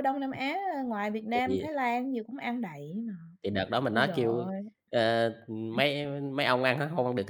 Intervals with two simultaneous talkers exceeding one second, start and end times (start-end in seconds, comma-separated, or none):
none